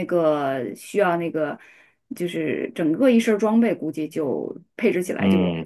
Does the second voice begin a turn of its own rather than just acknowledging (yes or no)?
yes